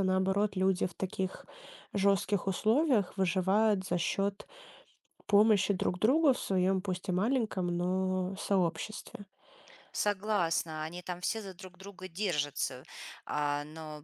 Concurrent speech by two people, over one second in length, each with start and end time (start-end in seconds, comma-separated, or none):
none